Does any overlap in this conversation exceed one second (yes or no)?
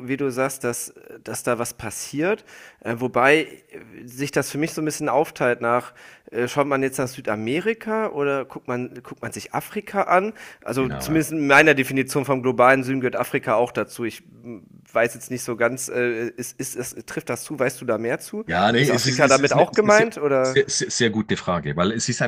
yes